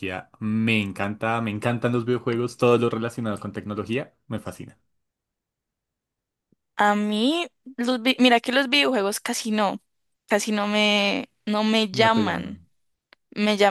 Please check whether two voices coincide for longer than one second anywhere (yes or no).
no